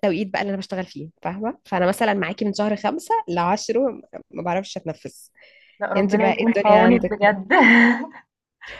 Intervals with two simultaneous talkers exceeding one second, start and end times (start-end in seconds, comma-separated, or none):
6.0-7.3